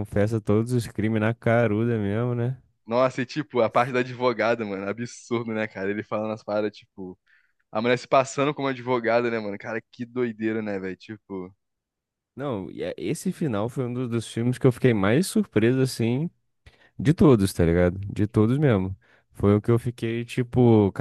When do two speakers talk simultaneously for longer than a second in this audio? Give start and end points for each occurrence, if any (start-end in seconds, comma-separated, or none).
none